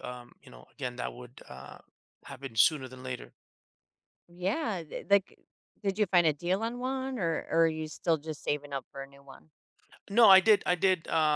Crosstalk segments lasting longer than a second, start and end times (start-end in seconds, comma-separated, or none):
none